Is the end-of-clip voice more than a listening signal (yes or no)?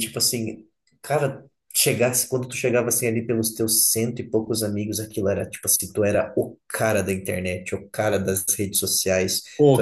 no